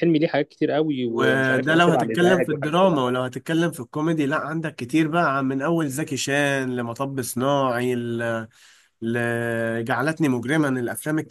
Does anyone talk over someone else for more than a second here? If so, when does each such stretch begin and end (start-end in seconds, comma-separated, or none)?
1.1-3.0